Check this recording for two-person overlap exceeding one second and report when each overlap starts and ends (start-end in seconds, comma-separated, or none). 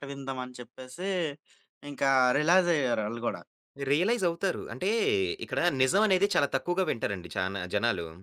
none